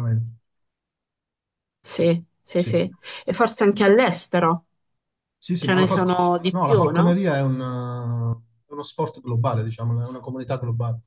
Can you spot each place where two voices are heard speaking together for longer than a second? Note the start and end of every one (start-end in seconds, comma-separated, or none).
5.6-7.2